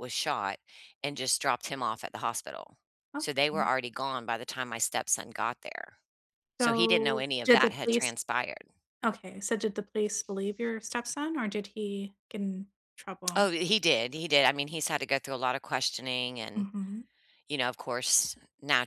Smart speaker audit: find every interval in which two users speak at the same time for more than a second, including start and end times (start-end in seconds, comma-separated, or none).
6.6-8.1